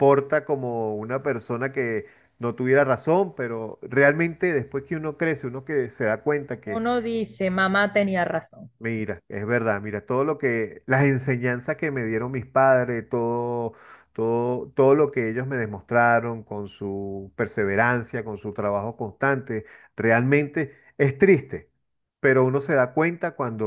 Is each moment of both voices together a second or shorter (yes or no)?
yes